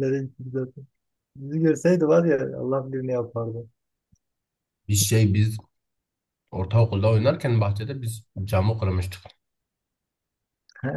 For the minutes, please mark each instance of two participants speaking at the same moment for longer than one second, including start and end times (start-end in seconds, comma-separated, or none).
none